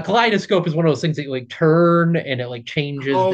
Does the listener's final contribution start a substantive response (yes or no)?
yes